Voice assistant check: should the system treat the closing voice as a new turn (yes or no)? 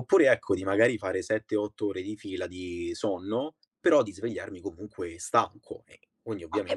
yes